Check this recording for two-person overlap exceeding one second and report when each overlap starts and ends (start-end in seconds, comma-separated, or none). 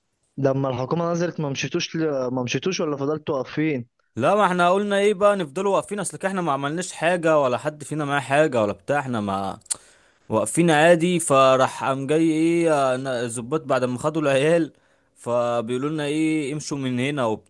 none